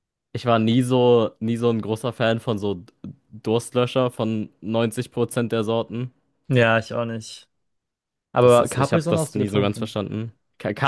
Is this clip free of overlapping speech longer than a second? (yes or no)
no